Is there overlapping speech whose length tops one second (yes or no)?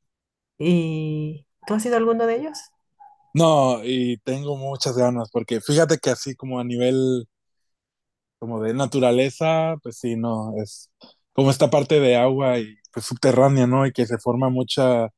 no